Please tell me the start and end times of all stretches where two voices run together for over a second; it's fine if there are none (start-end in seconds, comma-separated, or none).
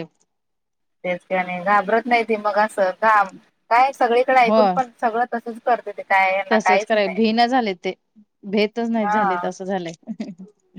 none